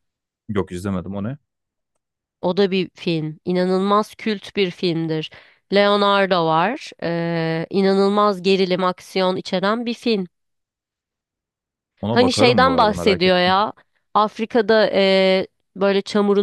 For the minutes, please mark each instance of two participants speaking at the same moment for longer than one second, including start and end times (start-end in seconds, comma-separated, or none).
12.1-13.6